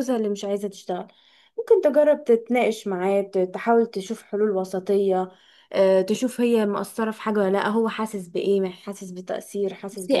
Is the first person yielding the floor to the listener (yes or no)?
yes